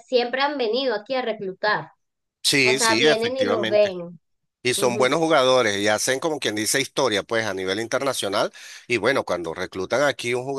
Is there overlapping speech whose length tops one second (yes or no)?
yes